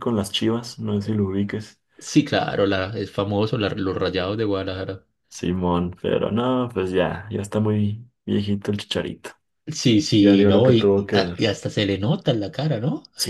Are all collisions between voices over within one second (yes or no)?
no